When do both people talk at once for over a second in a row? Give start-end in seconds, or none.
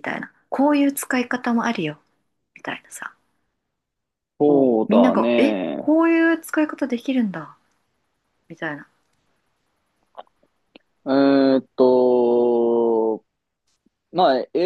4.4-5.9